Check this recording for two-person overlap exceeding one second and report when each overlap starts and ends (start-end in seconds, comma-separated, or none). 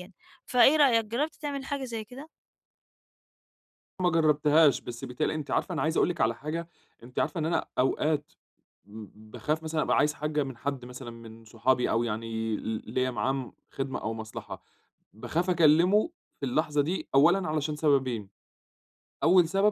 none